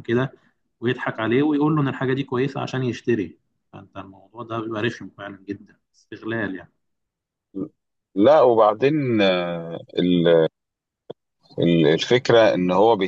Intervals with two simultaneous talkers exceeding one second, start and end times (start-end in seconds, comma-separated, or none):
none